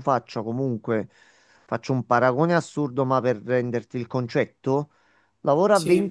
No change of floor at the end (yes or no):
yes